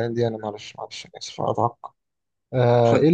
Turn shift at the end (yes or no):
no